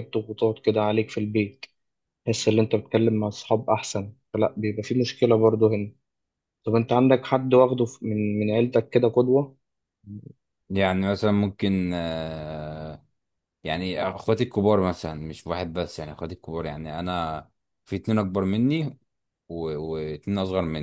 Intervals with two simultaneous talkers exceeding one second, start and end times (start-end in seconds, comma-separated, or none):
none